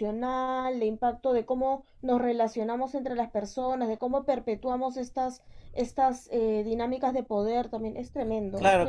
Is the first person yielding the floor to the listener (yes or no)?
yes